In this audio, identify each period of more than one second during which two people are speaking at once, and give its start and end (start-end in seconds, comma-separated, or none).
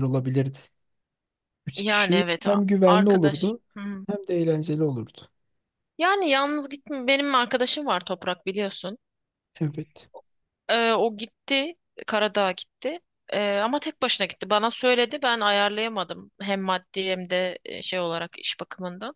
1.7-3.6